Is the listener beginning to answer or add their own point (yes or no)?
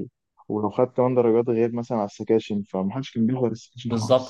yes